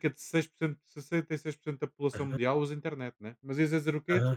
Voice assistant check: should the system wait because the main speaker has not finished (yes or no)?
no